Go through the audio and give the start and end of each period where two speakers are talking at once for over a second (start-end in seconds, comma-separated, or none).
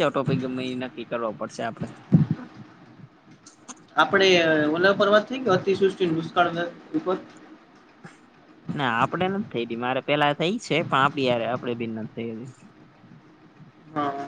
none